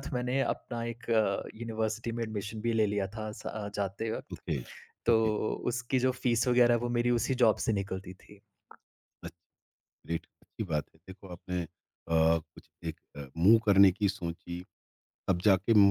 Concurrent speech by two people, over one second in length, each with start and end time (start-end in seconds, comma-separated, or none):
none